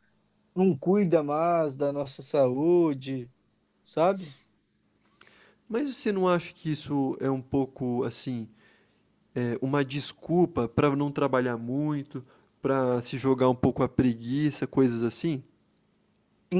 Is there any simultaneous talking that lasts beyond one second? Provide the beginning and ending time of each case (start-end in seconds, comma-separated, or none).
none